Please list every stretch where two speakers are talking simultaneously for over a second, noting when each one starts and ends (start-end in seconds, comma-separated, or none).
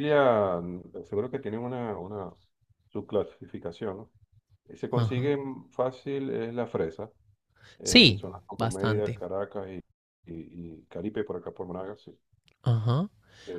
7.8-9.2